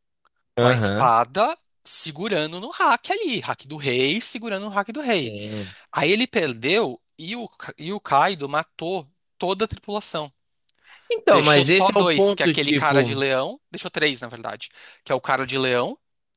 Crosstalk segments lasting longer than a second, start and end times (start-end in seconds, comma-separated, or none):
11.3-13.2